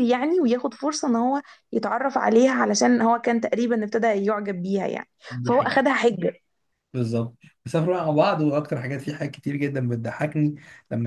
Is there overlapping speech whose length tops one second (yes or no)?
no